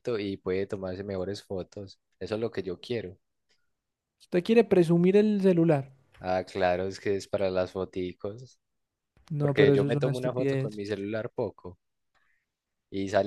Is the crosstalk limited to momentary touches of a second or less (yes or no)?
no